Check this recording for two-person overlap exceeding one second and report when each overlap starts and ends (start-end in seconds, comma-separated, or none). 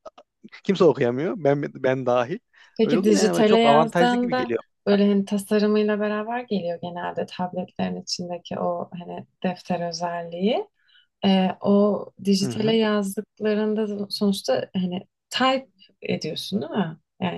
2.8-4.6